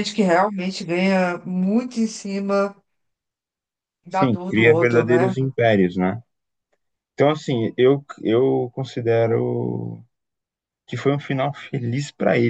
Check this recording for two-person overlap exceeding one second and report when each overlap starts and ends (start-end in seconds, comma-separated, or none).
4.1-5.3